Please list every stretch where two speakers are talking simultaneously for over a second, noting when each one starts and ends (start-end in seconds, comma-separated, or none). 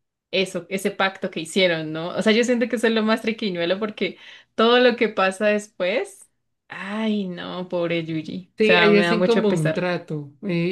8.6-9.8